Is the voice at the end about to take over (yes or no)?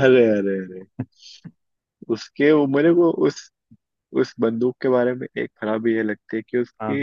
no